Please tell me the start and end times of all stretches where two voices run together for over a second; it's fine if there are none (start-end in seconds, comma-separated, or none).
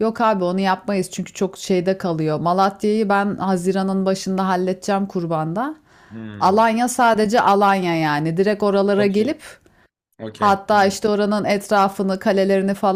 none